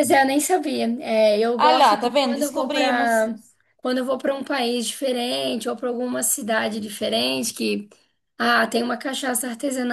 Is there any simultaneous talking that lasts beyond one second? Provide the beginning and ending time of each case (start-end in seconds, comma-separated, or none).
1.6-3.3